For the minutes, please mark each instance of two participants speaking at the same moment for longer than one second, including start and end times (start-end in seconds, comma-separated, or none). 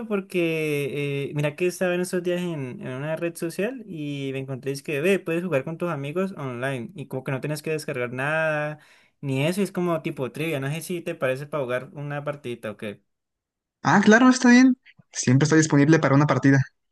none